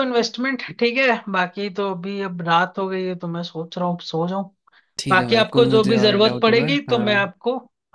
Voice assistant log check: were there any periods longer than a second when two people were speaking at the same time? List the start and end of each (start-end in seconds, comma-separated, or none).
5.1-7.3